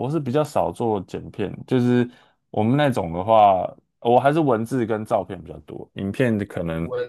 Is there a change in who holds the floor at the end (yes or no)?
yes